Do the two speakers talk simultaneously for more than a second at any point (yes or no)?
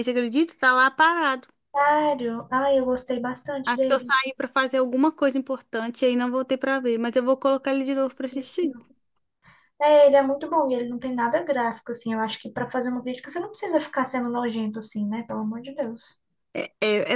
no